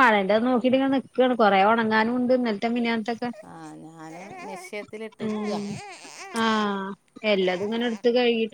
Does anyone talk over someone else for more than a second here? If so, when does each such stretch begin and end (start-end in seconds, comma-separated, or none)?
none